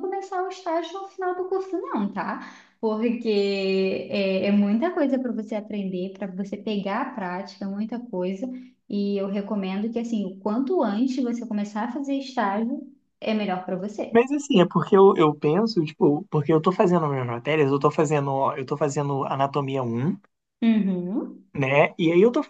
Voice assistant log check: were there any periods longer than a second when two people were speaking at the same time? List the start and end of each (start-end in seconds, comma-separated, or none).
none